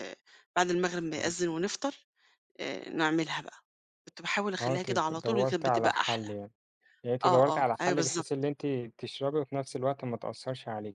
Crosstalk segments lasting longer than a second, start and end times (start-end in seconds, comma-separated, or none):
4.6-6.3, 7.2-8.5